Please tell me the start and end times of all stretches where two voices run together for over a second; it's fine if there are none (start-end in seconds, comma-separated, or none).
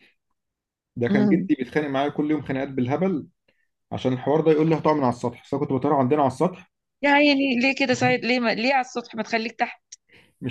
none